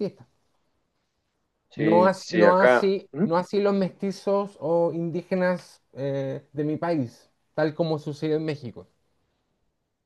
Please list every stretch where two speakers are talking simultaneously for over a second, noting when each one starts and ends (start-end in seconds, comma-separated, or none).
1.7-3.2